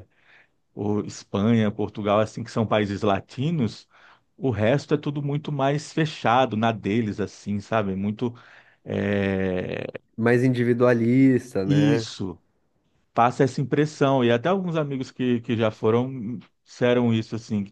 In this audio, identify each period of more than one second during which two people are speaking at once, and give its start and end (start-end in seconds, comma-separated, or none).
none